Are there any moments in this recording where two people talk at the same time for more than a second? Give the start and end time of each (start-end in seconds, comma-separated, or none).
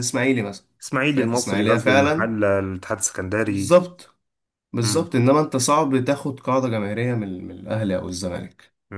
1.1-2.3